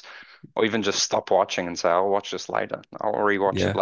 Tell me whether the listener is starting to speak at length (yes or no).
yes